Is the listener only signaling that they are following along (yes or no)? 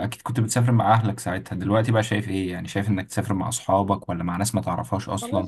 no